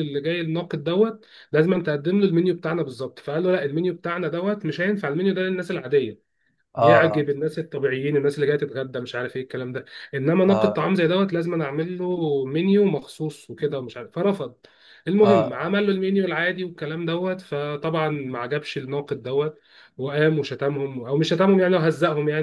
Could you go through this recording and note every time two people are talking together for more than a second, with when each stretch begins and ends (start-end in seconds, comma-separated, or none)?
none